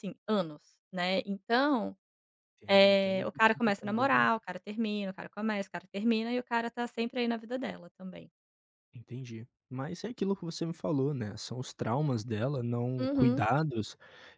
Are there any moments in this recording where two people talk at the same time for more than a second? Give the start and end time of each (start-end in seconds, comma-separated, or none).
2.7-4.3